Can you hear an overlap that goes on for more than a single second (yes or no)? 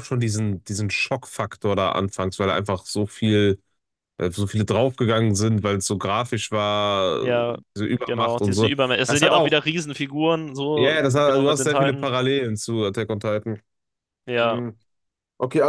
yes